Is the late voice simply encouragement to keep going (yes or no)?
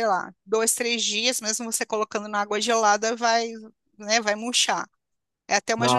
yes